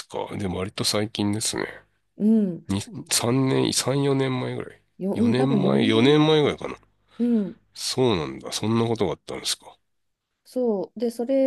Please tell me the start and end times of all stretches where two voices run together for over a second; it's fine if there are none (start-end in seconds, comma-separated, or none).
5.0-6.6